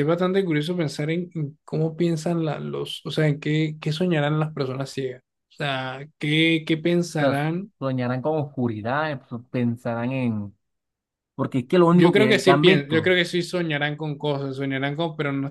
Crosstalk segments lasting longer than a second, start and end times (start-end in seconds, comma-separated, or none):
11.9-13.2